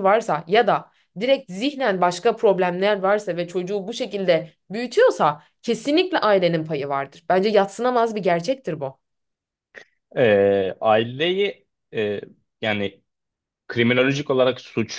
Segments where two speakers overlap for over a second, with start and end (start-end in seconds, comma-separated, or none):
none